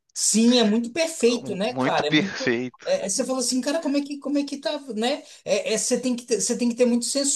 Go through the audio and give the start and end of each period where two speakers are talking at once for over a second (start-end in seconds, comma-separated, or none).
1.3-2.9